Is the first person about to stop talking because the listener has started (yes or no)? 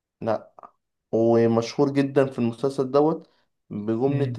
no